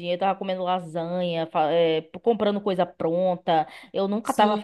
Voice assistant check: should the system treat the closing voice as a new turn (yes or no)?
no